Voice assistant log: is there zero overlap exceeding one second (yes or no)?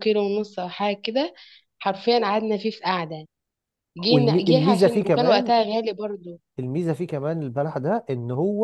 no